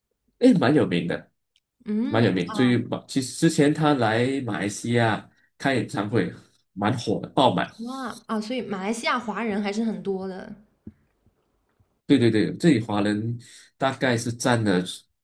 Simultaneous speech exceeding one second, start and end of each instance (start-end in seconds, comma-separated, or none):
none